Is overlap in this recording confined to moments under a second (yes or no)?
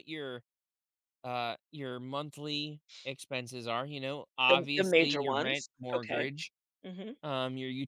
no